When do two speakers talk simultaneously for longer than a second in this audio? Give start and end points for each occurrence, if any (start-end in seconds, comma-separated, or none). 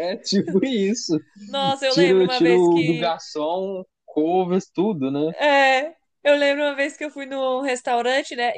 1.9-3.1